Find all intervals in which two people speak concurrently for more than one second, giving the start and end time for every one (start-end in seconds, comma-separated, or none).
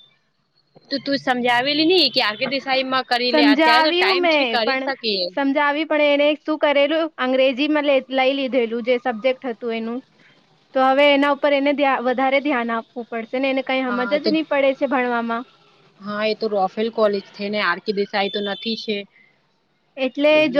3.3-4.9